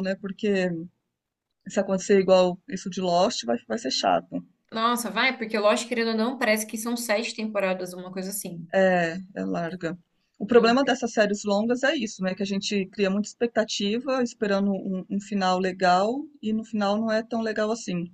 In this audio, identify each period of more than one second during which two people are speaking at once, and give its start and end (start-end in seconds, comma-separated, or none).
none